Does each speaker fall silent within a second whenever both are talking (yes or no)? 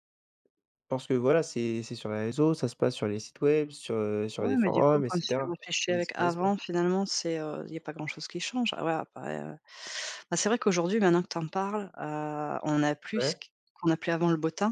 no